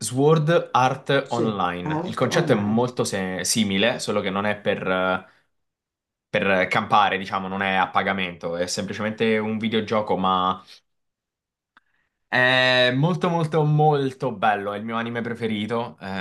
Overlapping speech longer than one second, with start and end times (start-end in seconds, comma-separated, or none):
1.2-2.9